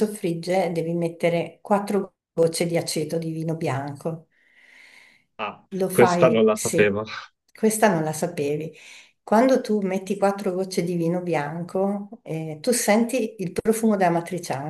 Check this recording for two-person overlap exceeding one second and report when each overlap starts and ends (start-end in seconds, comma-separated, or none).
5.8-7.0